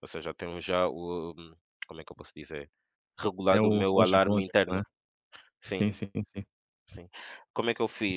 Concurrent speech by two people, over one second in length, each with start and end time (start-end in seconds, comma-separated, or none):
3.5-4.8